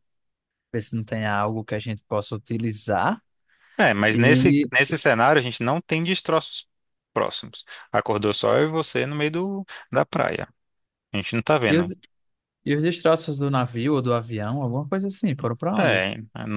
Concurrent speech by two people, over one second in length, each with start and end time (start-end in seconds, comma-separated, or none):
none